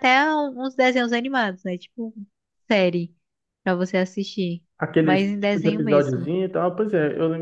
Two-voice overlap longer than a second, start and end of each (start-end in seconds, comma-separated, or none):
5.0-6.3